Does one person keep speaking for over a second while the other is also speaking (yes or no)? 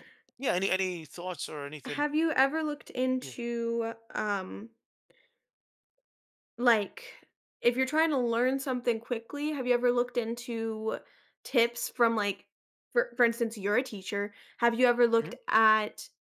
no